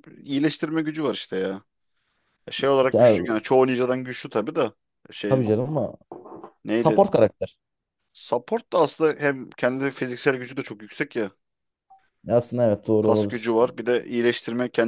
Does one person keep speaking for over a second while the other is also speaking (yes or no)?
no